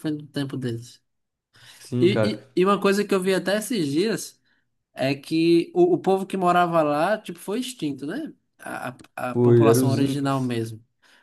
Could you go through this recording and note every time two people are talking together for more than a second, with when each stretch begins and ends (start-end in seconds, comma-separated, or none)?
9.3-10.6